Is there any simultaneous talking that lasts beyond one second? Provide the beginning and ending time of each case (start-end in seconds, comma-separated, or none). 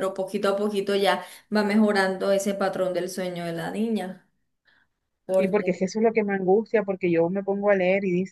none